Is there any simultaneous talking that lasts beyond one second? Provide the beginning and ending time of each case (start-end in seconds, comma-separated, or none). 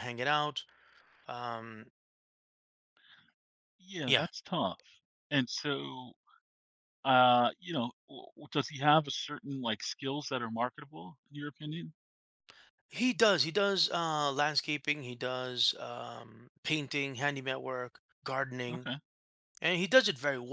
none